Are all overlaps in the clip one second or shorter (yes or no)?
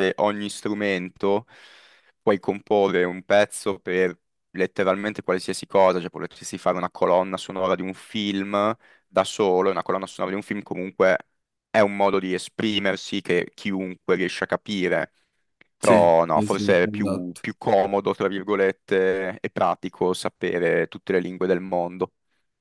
no